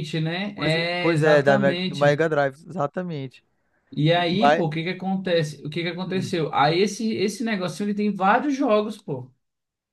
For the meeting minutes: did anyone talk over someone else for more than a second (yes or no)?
yes